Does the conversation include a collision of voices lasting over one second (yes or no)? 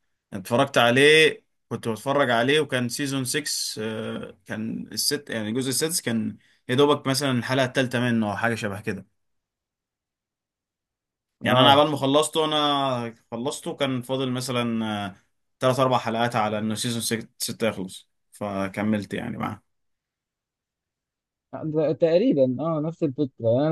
no